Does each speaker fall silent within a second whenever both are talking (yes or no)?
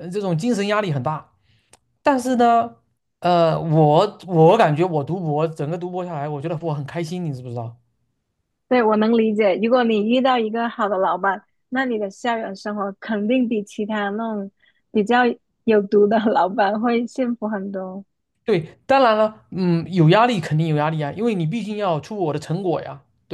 yes